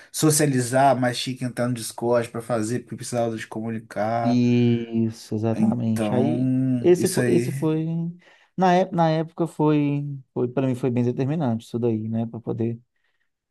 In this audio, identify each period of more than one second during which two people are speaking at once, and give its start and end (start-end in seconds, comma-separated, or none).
5.5-7.5